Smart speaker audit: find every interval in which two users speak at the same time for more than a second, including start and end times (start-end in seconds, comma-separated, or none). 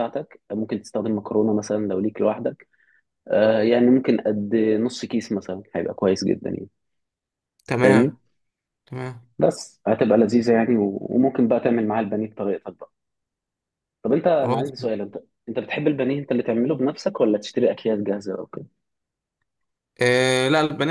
none